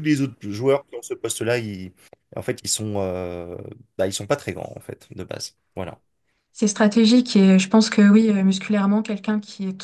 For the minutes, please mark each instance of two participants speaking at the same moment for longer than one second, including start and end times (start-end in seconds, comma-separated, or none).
none